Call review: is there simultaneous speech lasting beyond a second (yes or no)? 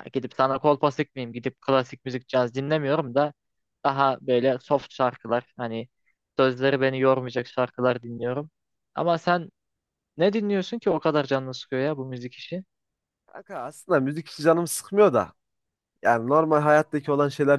no